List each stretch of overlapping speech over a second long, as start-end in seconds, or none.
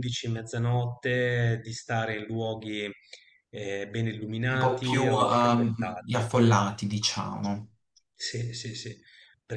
4.5-6.2